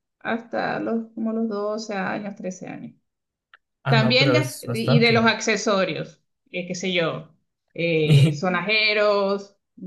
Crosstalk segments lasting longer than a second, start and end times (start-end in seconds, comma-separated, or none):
3.9-5.3